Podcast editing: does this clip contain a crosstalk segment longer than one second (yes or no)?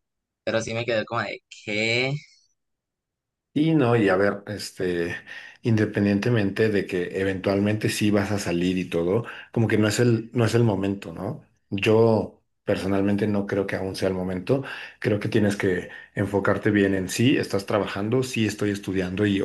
no